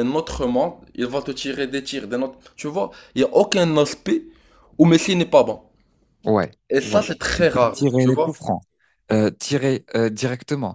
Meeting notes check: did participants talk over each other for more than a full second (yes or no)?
yes